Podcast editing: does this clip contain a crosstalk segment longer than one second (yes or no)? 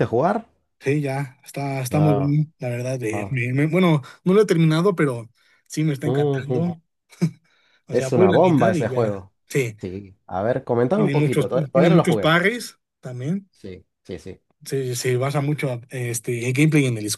yes